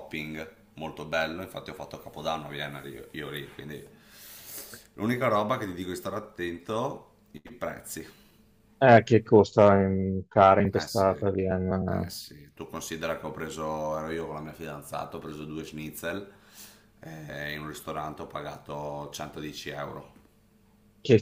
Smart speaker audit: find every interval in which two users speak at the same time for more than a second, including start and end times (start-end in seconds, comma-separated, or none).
10.7-12.1